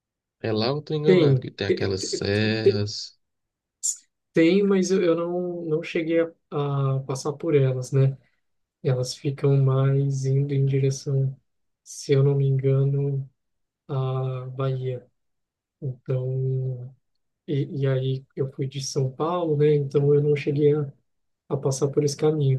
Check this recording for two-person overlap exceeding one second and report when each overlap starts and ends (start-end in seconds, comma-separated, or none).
1.0-2.9